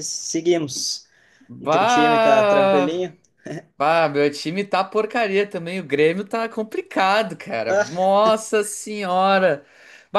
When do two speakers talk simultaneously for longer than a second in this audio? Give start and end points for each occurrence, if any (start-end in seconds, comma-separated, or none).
1.6-3.0